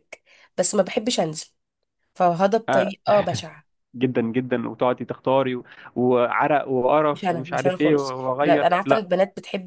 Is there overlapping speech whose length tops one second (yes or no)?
yes